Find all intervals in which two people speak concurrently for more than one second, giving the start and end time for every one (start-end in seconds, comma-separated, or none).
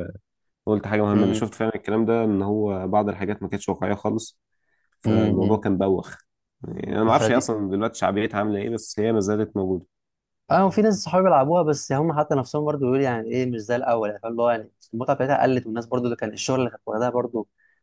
none